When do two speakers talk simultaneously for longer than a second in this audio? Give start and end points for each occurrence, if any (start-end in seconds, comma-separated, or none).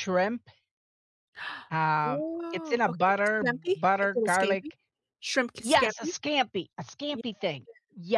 2.0-4.7